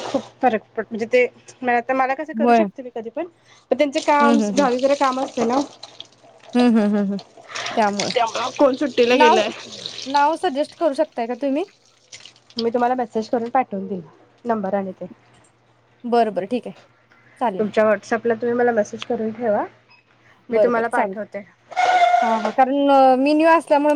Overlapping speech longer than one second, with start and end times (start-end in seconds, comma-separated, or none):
none